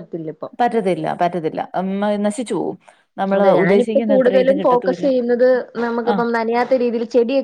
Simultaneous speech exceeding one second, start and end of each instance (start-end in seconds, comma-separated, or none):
3.4-5.1